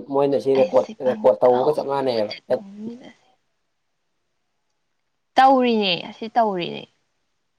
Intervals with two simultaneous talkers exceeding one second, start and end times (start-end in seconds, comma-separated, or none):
0.6-2.3